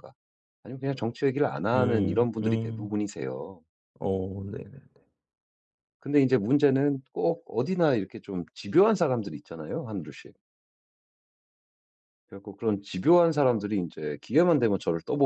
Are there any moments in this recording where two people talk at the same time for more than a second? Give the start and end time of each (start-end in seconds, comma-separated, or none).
1.7-3.0